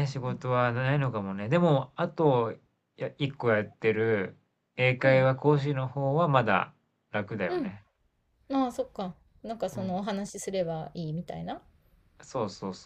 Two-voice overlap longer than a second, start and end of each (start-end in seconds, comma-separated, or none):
none